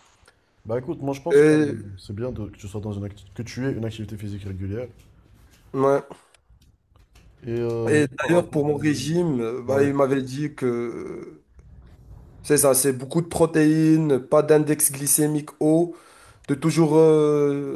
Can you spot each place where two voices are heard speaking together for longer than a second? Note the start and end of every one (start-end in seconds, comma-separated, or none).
7.9-9.9